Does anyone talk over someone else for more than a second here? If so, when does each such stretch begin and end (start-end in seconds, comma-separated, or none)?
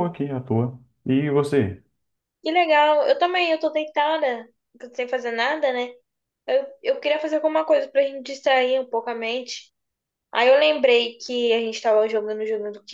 none